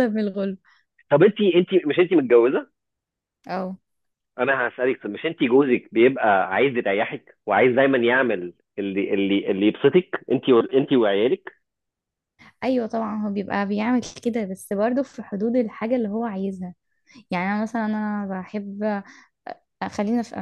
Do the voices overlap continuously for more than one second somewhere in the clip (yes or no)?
no